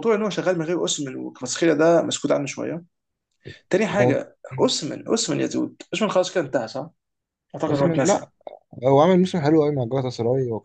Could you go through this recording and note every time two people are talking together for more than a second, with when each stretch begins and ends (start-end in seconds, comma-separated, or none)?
none